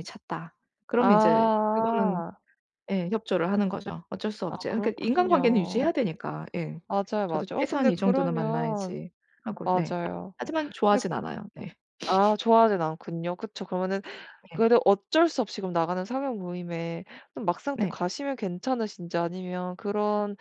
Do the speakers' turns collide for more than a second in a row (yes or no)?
yes